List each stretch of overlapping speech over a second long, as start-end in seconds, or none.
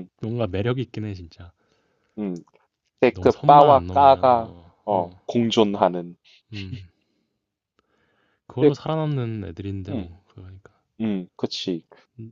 3.1-5.2